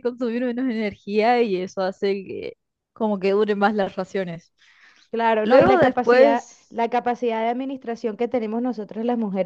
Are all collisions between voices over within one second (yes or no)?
no